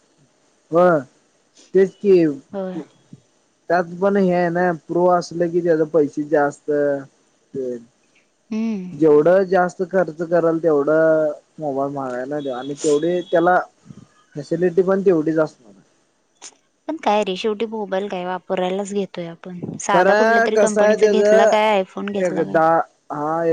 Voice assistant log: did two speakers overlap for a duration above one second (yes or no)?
yes